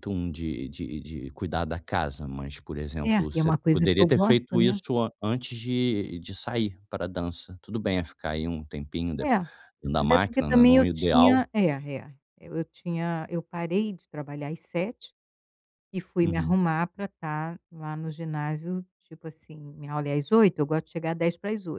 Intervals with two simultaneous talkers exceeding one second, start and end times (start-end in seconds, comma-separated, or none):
3.0-4.8, 10.0-11.5